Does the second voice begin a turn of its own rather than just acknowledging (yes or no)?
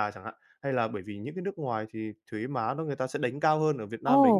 yes